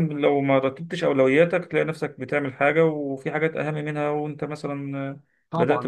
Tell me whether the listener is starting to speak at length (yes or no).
yes